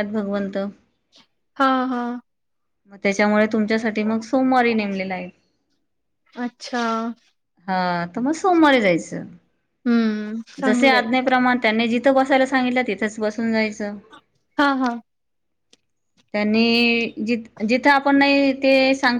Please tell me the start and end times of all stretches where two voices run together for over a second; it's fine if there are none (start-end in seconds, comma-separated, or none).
none